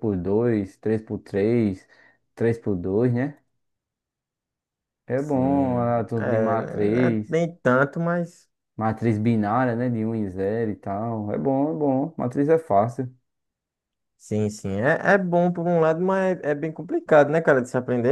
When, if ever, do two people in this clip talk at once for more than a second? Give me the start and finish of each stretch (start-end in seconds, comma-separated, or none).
5.2-7.4